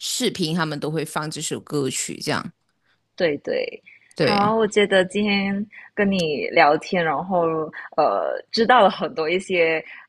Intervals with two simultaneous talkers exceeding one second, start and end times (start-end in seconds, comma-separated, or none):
none